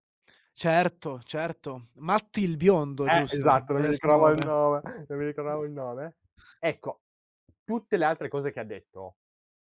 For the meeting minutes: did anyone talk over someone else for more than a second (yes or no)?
yes